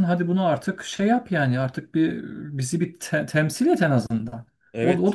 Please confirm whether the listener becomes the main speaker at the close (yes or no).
yes